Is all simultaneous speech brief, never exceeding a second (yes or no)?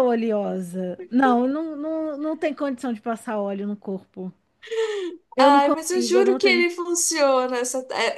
no